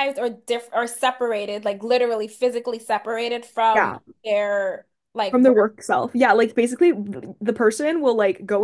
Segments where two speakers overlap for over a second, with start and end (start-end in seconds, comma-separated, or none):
none